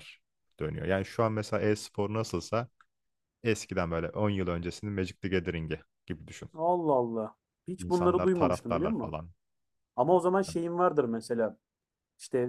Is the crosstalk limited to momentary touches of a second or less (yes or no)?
no